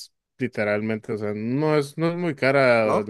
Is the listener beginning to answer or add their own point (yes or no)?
no